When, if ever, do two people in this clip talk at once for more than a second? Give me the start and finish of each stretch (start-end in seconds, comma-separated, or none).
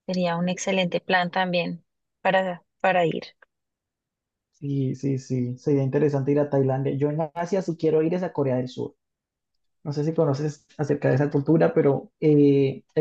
none